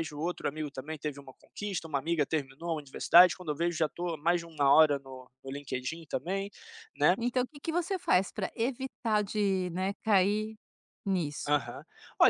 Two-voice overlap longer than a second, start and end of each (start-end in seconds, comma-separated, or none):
none